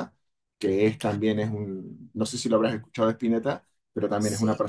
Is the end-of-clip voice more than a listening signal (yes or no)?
no